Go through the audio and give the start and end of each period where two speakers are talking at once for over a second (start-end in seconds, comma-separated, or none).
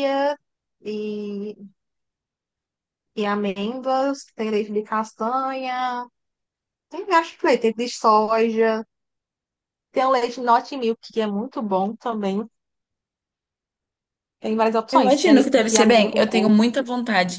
14.9-16.6